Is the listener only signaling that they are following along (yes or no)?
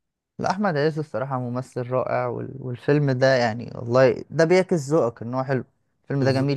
no